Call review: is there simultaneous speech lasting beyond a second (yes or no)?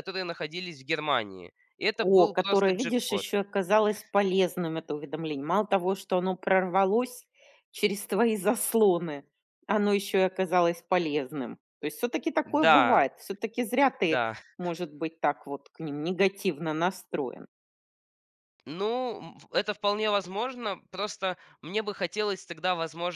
yes